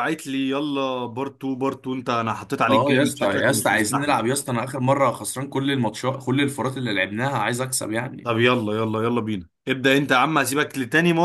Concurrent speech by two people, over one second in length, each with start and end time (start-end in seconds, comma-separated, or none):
2.7-4.1